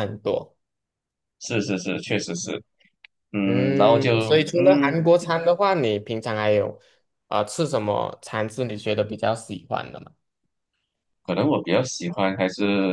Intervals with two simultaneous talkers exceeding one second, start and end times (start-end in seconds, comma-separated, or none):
3.4-5.0